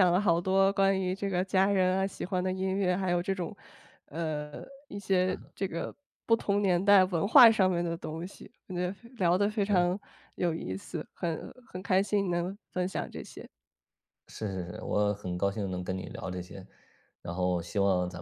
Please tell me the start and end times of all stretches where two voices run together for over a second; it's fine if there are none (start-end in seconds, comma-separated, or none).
none